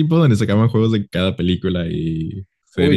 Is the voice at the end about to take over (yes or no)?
yes